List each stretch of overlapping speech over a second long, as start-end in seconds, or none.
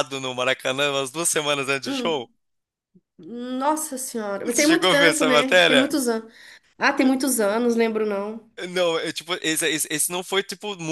4.5-5.9